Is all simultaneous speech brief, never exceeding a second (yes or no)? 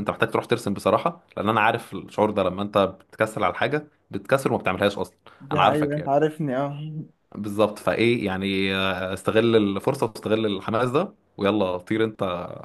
yes